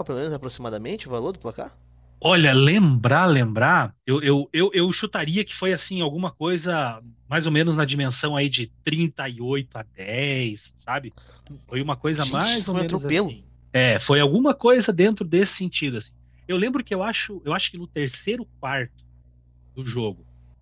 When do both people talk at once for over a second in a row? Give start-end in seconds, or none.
12.2-13.3